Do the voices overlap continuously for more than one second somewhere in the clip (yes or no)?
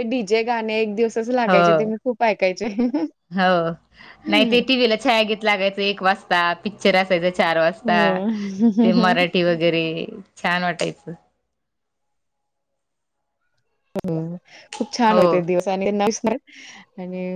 no